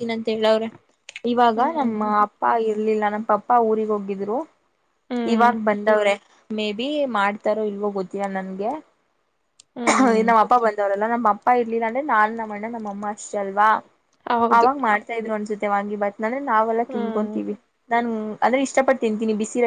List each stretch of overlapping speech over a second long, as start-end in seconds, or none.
none